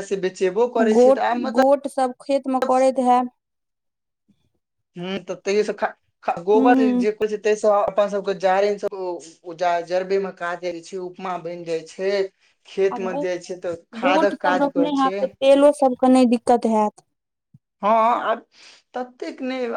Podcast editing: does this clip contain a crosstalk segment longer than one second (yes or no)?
yes